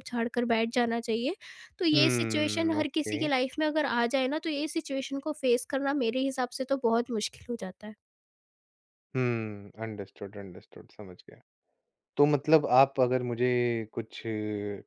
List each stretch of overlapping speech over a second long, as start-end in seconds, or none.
1.9-3.2